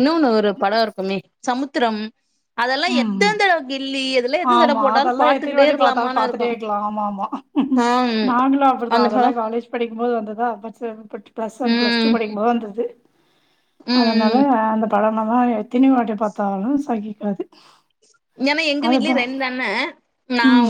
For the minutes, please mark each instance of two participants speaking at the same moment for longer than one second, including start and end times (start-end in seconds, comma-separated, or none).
4.5-6.5